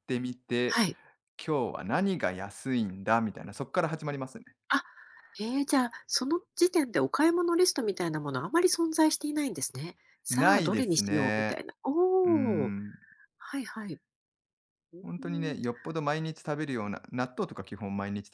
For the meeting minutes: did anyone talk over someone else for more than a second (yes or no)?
yes